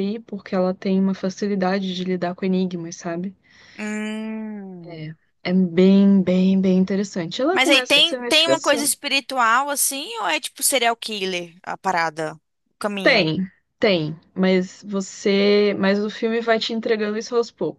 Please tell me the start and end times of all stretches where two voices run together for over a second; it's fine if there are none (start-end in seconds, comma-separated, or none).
7.5-8.9